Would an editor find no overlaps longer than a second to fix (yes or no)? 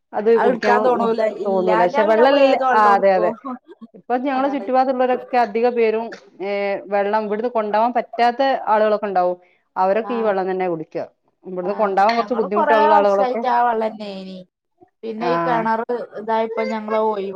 no